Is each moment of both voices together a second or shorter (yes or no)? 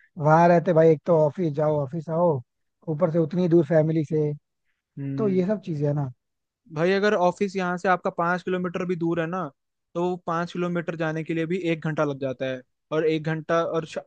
yes